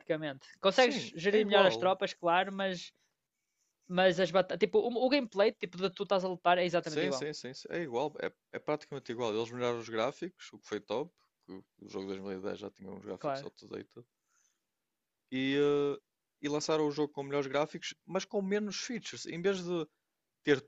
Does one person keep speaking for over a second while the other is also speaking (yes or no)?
yes